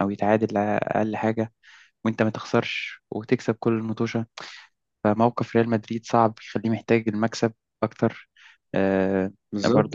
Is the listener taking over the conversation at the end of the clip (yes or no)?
yes